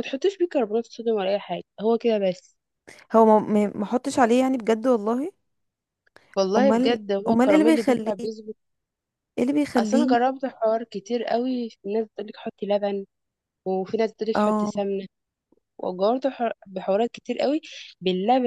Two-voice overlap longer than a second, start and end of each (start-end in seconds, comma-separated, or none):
6.6-8.1